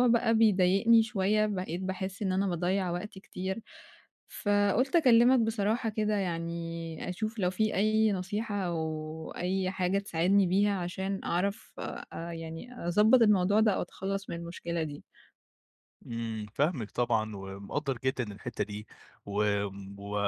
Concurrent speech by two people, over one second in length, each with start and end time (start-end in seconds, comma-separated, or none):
none